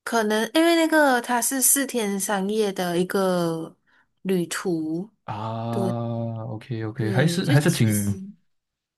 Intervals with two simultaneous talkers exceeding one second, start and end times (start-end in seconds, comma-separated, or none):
7.0-8.2